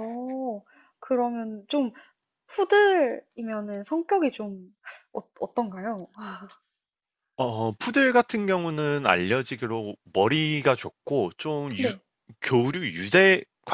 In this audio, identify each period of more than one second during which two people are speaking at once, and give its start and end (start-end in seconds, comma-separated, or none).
none